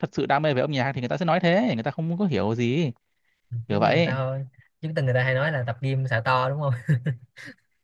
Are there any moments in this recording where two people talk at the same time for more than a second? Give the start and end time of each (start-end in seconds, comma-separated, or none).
none